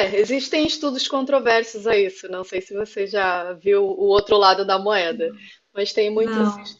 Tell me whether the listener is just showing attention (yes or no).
yes